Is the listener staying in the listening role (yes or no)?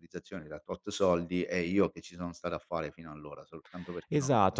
no